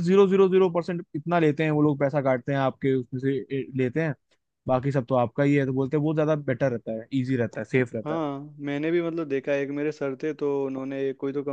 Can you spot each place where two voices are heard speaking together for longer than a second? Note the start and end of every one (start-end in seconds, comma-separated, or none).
none